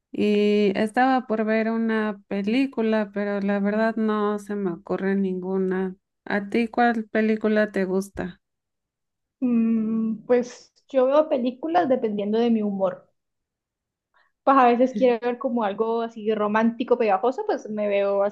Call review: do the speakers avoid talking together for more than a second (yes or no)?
yes